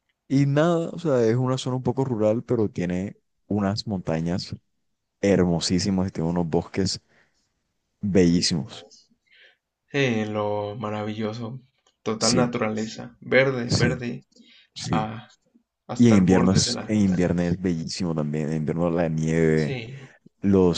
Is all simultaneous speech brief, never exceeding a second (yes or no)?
no